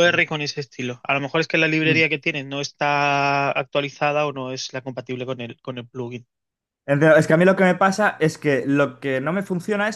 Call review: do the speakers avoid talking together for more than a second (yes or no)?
yes